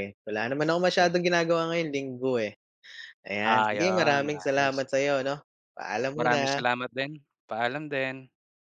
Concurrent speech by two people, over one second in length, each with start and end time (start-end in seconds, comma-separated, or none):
3.4-4.8